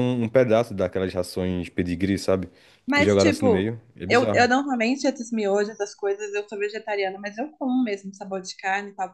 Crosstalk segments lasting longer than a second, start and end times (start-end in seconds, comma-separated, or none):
2.9-4.5